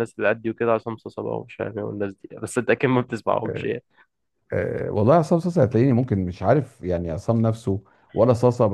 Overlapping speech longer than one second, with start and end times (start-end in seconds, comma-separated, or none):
none